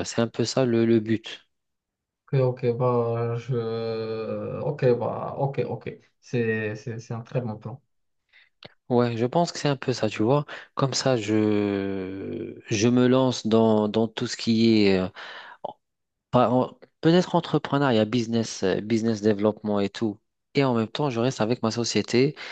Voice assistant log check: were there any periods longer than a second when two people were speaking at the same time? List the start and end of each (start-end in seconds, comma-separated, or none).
none